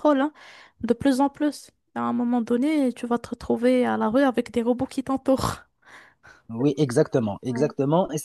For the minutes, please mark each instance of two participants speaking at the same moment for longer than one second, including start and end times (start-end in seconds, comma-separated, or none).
none